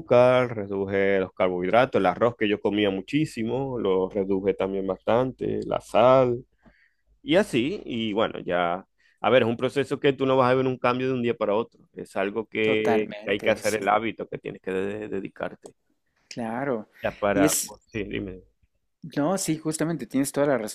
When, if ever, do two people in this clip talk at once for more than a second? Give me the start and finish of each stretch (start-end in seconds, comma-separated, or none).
12.6-13.9